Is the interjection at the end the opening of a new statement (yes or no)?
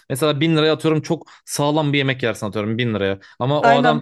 no